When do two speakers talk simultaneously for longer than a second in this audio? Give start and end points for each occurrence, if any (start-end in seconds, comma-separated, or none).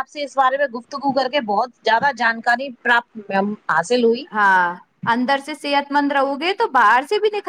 none